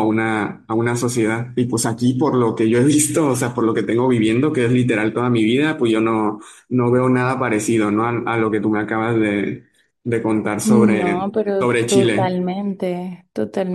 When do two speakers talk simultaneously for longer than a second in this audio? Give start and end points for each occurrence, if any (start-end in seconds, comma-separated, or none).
10.6-12.4